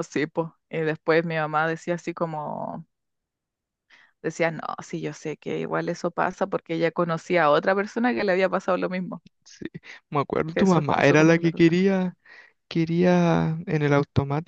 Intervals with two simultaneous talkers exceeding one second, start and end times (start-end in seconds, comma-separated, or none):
10.5-11.8